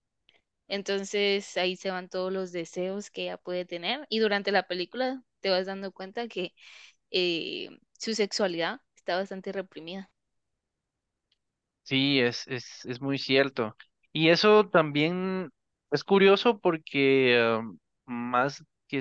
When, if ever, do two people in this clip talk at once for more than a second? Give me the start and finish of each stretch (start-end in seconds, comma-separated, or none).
none